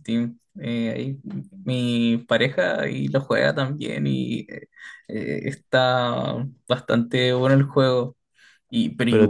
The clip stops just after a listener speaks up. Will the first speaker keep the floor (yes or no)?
yes